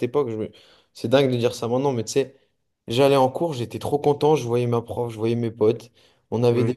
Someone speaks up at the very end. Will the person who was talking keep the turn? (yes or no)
yes